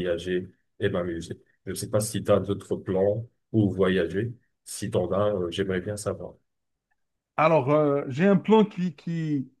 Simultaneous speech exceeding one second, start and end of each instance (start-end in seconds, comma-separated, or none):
none